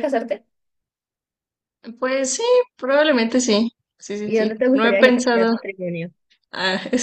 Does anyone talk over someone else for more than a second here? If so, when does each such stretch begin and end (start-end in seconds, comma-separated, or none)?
4.2-5.5